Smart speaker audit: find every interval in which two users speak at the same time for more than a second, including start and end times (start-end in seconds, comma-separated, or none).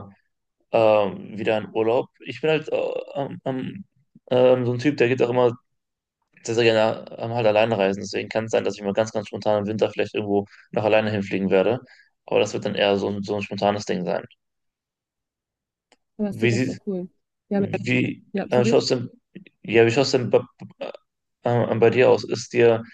none